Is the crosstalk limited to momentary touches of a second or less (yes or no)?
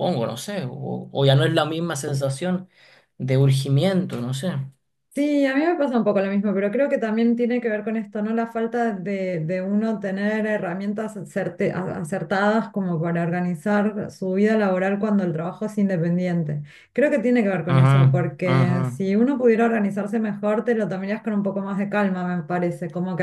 no